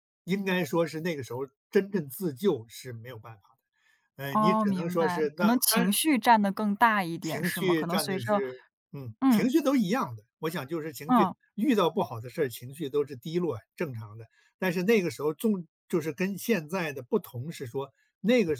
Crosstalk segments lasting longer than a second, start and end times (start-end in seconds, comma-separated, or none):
4.3-5.9, 7.2-8.4